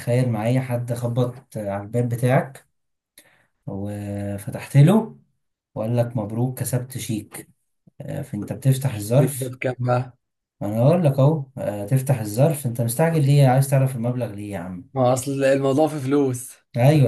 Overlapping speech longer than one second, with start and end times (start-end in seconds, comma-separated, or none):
none